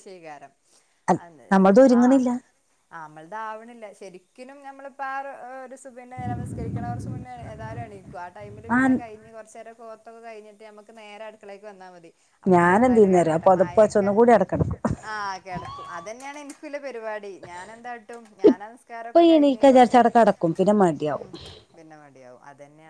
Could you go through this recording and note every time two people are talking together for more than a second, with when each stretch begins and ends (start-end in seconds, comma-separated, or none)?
12.5-14.1, 18.5-20.1